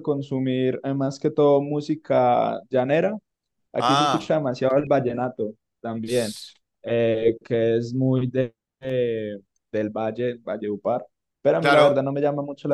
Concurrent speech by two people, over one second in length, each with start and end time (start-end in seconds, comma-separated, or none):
none